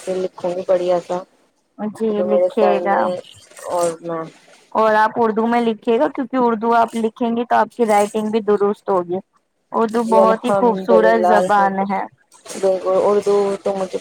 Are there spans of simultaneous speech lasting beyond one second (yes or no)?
yes